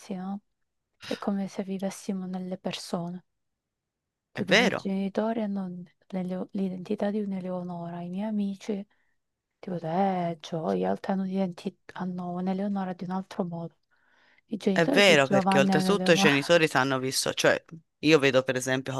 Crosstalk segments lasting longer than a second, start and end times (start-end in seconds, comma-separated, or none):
14.7-16.3